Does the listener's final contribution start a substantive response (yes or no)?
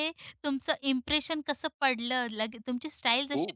no